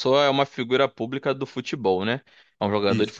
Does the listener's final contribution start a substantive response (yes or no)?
no